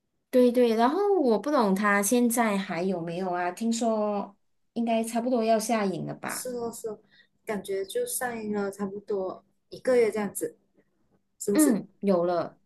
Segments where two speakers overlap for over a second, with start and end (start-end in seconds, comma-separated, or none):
none